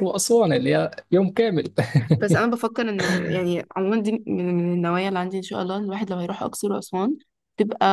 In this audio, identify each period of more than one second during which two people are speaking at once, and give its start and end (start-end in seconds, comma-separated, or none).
none